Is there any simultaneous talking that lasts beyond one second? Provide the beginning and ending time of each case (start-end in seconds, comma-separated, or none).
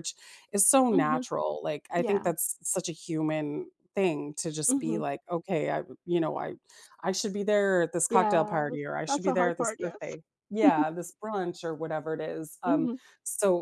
8.1-10.2